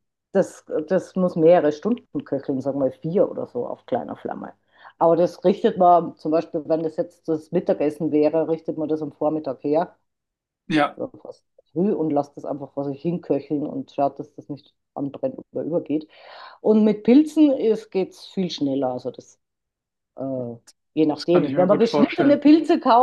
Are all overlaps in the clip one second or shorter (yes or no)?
no